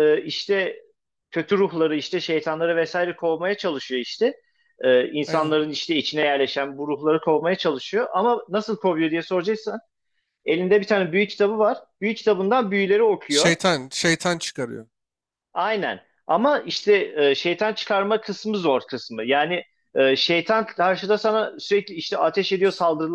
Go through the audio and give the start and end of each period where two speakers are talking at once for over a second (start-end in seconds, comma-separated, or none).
none